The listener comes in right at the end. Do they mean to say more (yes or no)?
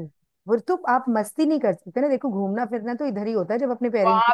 yes